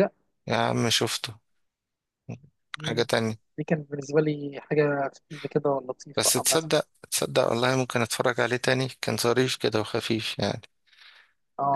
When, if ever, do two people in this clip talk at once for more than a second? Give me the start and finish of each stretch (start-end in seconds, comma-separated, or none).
none